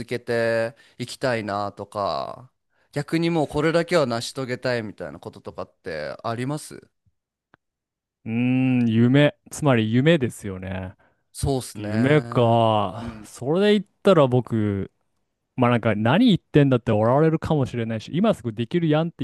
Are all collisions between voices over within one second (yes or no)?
yes